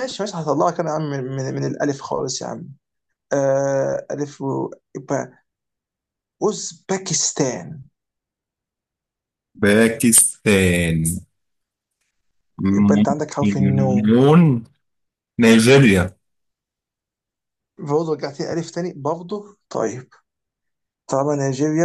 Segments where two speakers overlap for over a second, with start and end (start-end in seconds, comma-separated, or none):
12.7-14.1